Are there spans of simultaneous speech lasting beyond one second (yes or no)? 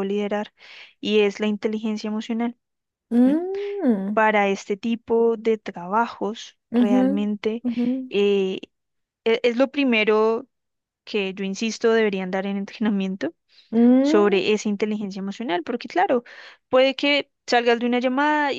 no